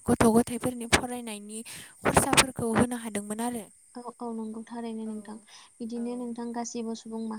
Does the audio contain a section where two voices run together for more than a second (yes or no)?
no